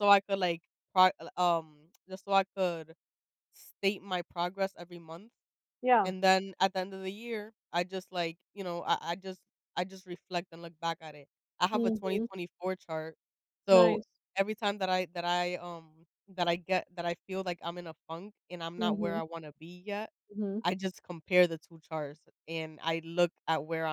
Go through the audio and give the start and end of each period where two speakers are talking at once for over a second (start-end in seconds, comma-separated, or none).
none